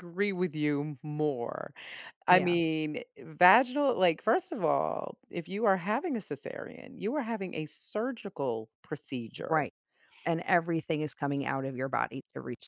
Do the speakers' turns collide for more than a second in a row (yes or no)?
no